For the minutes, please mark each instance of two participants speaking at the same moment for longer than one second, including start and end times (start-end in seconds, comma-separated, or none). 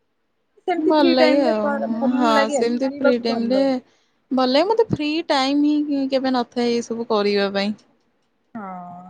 0.9-3.6